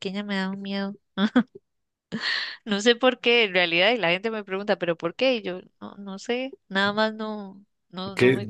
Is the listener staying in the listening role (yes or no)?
no